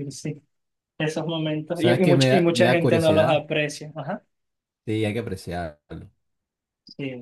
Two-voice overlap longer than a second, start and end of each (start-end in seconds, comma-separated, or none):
1.7-3.4